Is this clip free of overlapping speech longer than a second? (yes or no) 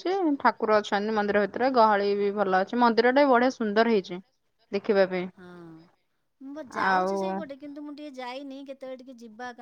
yes